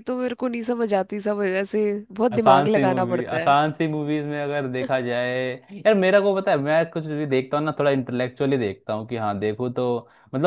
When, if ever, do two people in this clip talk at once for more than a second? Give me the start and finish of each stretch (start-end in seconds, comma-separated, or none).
2.3-3.5